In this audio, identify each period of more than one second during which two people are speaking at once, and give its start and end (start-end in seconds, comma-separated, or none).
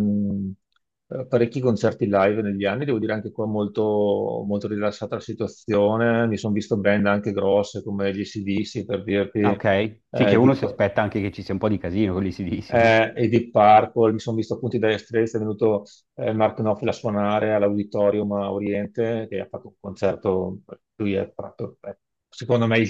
none